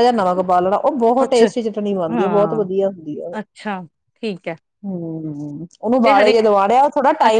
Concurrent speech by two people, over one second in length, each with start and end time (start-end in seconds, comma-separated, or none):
none